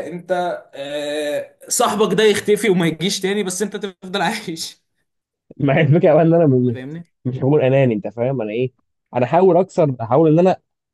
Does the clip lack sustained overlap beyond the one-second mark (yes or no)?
yes